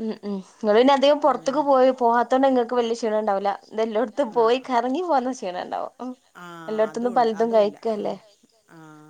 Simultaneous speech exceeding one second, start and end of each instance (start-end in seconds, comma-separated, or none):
6.7-8.1